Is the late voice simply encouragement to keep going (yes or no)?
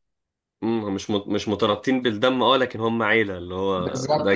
no